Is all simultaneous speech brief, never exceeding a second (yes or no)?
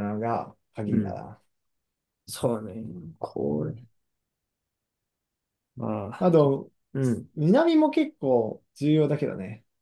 yes